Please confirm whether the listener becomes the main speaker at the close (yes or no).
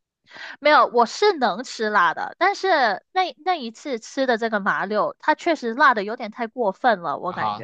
yes